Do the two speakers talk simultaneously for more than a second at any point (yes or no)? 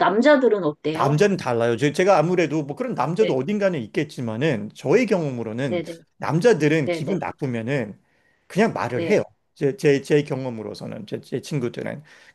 no